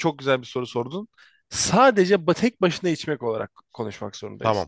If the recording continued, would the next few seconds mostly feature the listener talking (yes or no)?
no